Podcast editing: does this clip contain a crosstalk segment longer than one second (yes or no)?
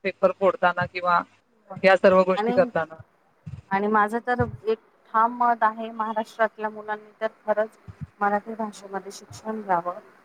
no